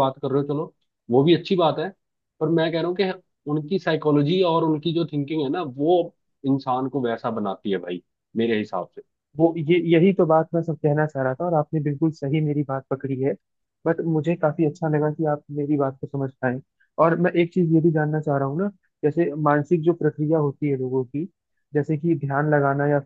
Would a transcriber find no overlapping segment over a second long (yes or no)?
yes